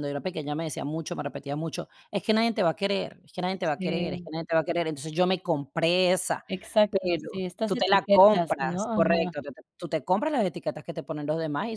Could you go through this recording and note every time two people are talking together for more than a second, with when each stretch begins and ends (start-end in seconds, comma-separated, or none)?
6.9-9.3